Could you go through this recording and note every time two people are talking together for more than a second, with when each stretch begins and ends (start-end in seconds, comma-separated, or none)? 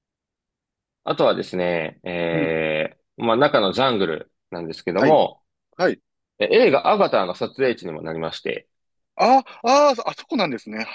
none